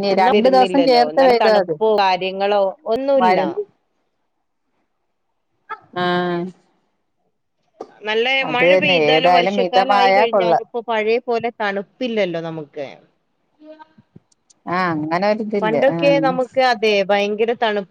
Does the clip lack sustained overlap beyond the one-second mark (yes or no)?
no